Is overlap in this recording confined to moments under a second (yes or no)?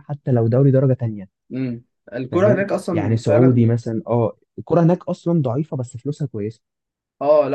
no